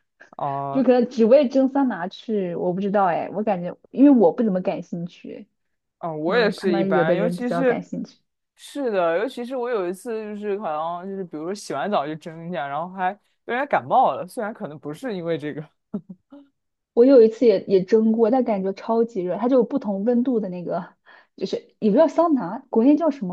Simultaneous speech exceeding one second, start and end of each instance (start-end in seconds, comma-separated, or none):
6.2-7.8